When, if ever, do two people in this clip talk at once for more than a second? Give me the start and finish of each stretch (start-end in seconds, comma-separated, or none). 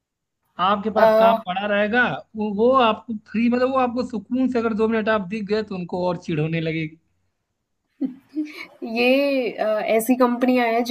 none